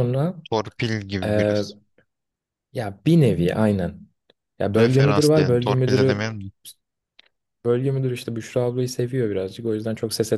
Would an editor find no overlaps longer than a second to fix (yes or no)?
no